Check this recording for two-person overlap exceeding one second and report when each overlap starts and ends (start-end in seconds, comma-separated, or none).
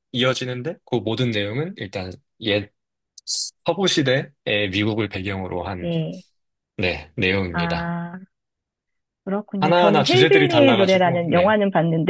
9.6-11.6